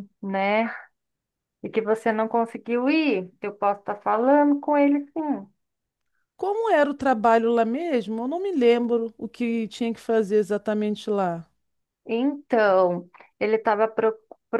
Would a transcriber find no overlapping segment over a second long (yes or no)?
yes